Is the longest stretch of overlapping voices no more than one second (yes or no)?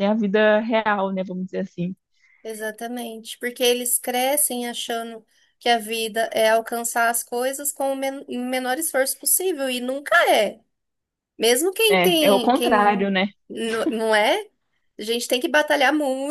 no